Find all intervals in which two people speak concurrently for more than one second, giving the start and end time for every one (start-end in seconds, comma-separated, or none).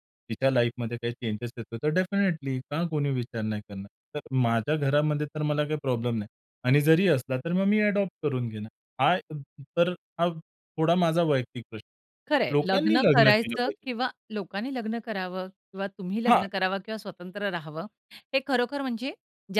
12.3-13.8